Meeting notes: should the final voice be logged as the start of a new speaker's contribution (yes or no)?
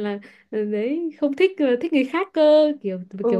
yes